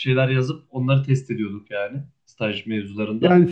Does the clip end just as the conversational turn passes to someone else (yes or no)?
yes